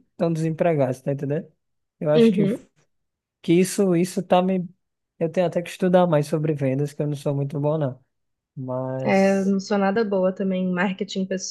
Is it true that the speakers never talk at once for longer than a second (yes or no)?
yes